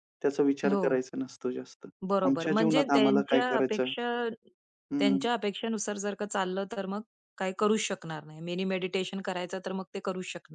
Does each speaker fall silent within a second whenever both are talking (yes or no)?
no